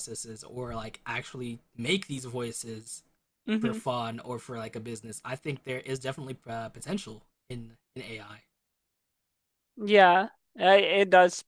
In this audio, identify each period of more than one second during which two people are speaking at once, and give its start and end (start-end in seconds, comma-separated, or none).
none